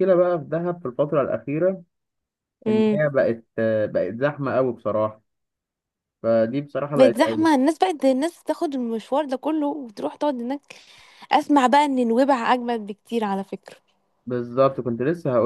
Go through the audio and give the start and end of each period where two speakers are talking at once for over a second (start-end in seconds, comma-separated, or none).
none